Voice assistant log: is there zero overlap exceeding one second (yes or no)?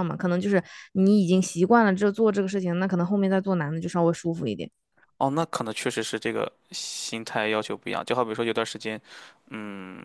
yes